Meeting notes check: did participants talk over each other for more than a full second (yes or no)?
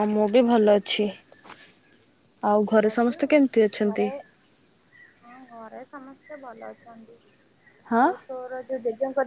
no